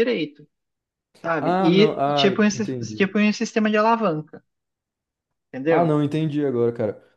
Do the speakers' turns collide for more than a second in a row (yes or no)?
yes